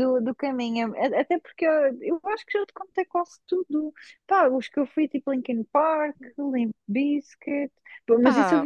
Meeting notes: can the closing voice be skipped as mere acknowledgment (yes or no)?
yes